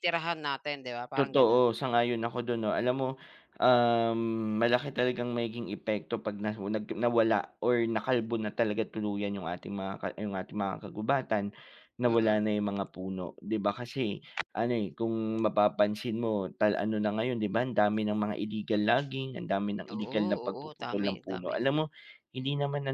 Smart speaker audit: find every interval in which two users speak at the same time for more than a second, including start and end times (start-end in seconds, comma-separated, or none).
19.9-21.6